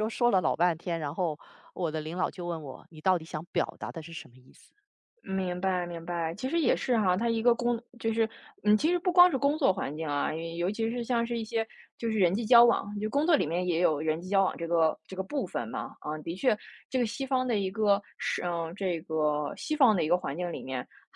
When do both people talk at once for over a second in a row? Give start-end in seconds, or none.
none